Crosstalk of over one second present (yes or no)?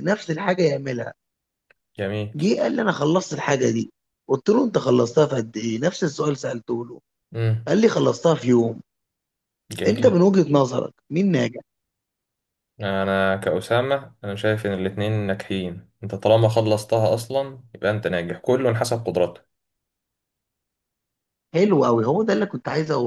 no